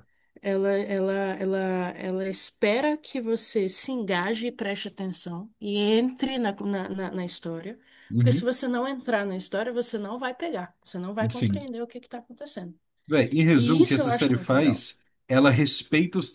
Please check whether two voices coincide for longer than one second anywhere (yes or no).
yes